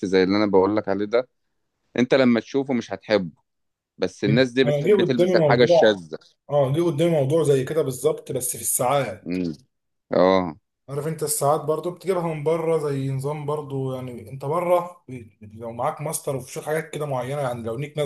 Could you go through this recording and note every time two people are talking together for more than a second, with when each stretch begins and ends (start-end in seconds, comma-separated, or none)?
4.7-6.0